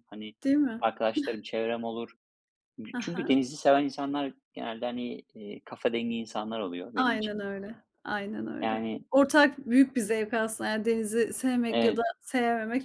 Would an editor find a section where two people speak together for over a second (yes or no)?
no